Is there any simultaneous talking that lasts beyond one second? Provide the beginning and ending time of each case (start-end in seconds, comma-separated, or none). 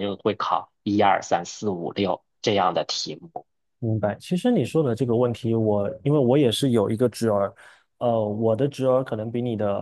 none